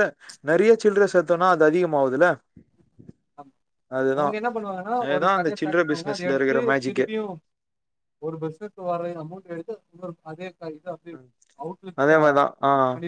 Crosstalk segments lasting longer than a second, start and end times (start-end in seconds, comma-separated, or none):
5.0-7.1